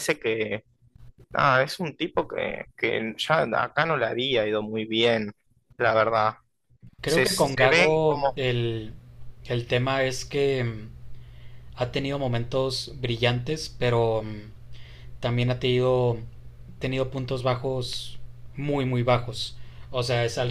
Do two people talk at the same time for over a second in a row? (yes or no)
yes